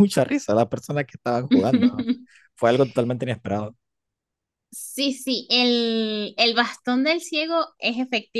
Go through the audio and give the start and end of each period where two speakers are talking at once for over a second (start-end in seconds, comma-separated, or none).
none